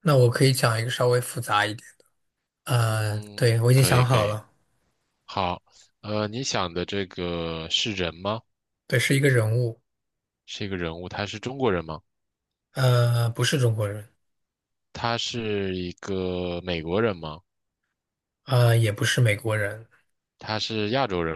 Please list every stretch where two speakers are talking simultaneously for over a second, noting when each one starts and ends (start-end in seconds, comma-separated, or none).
2.9-4.4